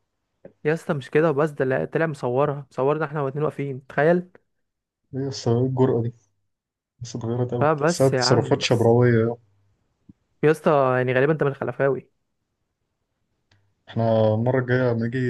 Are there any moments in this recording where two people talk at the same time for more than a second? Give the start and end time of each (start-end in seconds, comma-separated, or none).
7.6-9.0